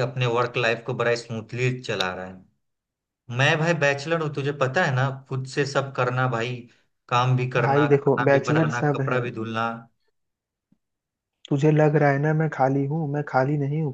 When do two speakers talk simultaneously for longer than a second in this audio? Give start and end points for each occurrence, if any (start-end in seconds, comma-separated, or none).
7.6-9.2